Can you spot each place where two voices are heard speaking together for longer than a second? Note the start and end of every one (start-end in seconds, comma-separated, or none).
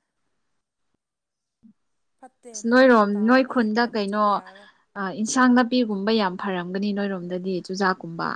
2.5-4.4